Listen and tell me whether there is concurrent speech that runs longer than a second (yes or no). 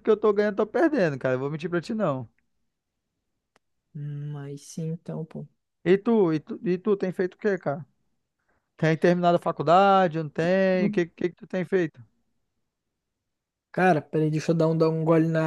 no